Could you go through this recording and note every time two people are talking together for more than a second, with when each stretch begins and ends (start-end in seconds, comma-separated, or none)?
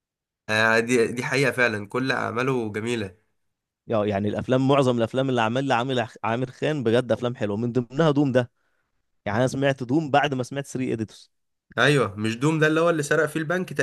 none